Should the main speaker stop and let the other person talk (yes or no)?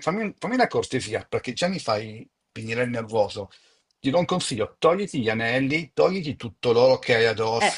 yes